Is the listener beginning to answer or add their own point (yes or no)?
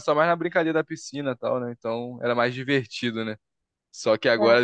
no